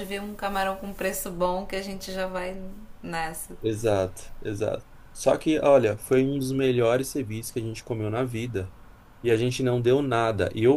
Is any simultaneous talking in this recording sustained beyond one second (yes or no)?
no